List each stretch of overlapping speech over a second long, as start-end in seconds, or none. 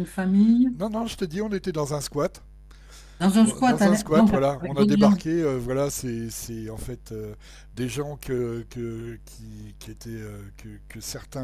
3.4-5.2